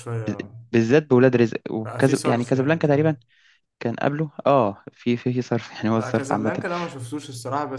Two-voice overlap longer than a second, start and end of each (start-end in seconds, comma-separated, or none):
1.8-3.2